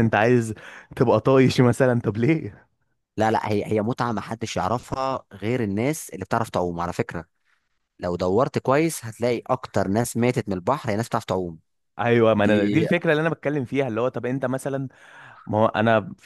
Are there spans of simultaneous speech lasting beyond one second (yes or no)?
no